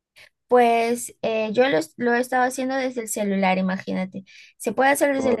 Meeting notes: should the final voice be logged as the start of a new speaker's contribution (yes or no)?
no